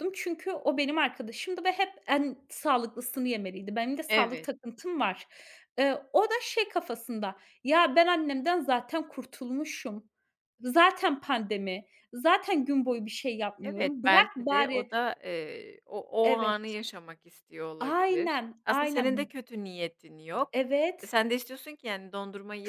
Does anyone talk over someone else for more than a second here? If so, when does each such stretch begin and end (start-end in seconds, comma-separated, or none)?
13.6-14.9, 17.8-19.3